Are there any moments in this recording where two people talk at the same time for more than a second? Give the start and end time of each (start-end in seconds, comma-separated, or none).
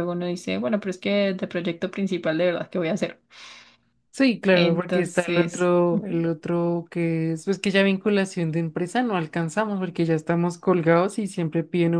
4.5-6.2